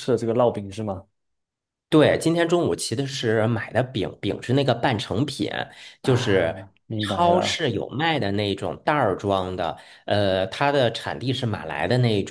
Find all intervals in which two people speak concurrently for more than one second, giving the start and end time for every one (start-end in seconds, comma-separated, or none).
6.0-7.6